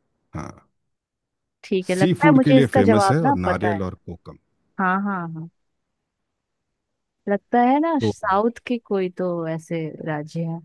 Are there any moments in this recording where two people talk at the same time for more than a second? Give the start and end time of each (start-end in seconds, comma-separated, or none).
1.9-3.8